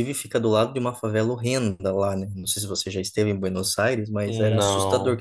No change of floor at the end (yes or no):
yes